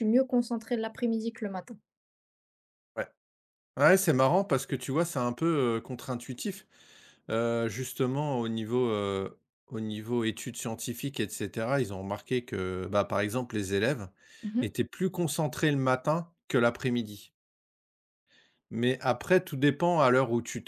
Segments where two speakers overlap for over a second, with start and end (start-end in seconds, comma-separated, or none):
none